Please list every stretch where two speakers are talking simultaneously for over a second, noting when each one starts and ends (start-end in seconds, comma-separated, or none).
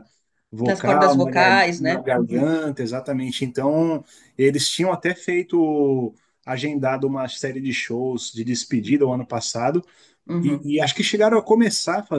0.6-2.4